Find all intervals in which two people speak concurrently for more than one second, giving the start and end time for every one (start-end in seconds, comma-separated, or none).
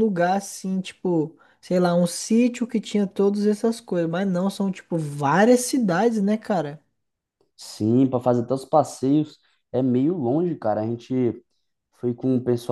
none